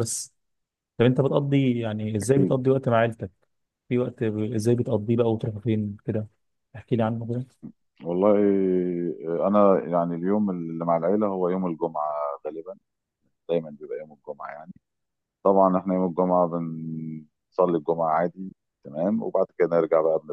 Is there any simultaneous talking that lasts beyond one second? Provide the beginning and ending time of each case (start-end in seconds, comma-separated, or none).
none